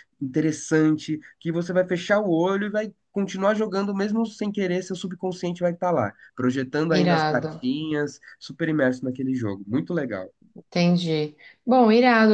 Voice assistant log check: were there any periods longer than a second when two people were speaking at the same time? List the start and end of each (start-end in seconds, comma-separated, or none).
none